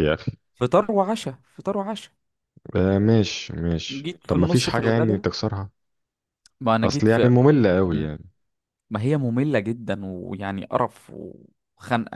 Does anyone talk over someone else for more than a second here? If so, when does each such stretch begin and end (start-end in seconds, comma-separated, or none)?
3.9-5.2